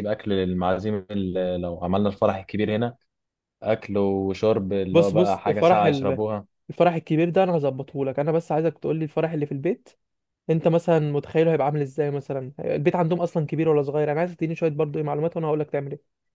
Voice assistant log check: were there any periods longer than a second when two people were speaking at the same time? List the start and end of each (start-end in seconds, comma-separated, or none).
4.9-6.2